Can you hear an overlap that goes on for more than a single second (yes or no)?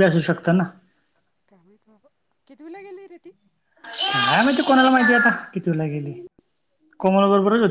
no